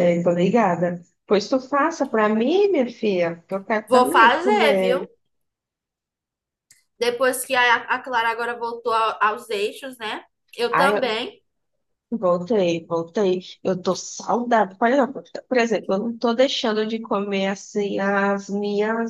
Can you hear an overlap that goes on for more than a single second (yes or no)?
yes